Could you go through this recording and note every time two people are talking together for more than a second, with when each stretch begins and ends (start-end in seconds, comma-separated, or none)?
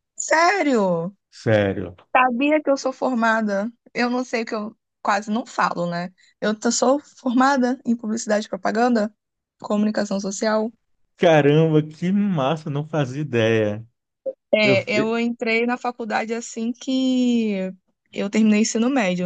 none